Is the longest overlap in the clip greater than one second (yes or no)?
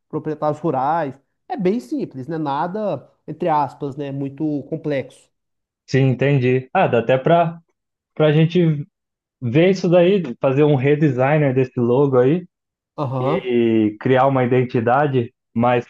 no